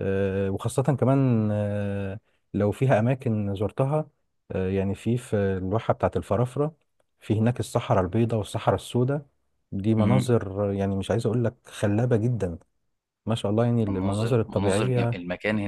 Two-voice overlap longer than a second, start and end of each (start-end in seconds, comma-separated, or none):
13.8-15.2